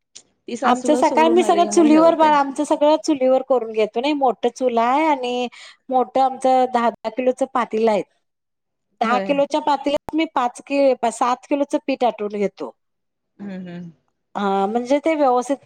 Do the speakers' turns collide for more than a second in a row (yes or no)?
yes